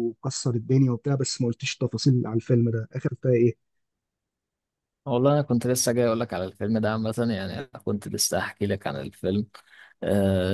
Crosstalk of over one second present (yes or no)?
no